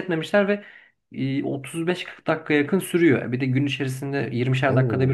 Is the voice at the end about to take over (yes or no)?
no